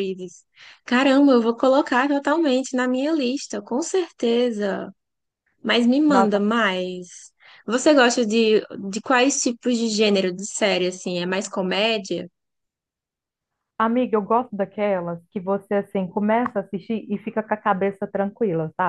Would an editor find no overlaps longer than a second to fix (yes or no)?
yes